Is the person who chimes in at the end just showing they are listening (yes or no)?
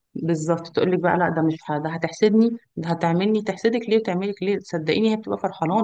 no